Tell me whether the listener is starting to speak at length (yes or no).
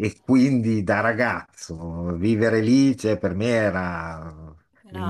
no